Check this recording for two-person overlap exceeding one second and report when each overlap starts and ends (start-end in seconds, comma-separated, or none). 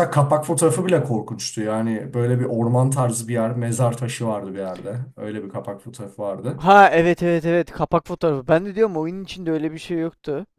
none